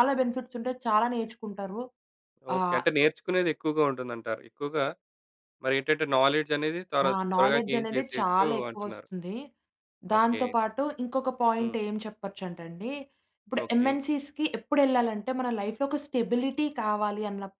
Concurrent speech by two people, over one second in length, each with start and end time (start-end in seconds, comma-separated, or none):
7.1-9.1